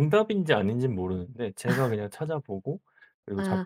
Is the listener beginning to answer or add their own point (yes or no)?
yes